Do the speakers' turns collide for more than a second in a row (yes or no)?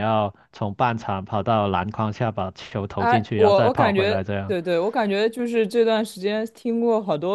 yes